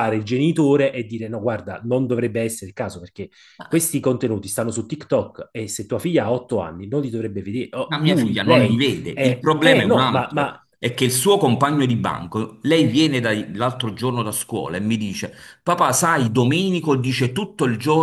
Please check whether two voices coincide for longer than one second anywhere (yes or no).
yes